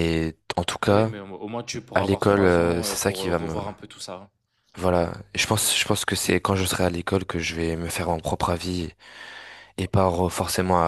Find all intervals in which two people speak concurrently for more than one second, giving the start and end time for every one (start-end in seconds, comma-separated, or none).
1.9-3.5